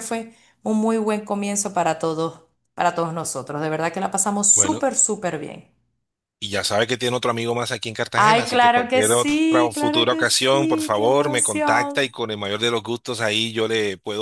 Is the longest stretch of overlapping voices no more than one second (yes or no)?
no